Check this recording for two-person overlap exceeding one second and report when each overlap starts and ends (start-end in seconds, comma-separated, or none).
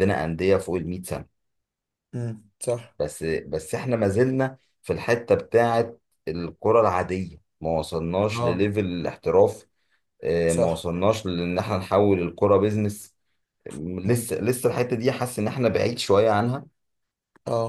none